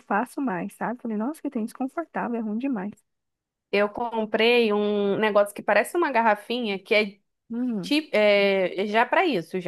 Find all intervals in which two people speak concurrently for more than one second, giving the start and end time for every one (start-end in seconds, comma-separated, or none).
none